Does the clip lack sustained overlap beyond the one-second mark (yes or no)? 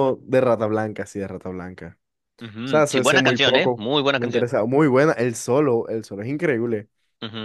no